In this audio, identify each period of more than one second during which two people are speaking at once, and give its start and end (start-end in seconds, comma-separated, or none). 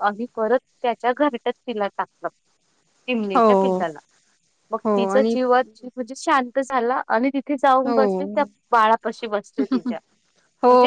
none